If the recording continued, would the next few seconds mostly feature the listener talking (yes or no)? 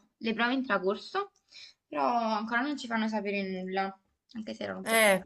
yes